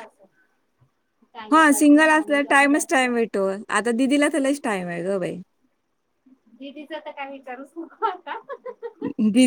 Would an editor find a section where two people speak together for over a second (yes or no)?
yes